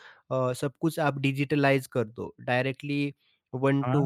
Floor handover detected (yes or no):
no